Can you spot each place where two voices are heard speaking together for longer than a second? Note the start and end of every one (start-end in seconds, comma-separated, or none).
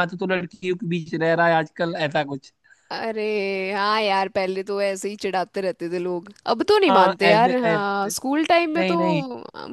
6.9-8.1